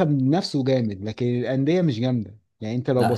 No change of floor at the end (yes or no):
no